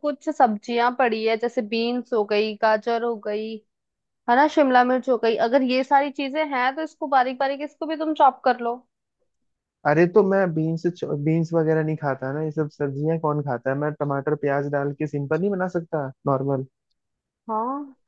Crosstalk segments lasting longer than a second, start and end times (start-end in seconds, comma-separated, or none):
none